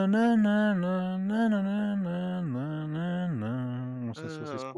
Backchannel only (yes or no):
no